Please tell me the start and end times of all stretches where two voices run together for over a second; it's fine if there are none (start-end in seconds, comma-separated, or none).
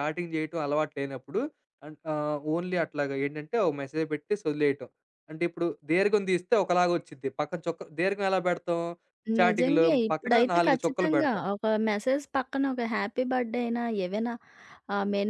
9.4-11.4